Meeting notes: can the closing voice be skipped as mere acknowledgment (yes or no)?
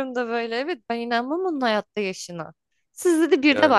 yes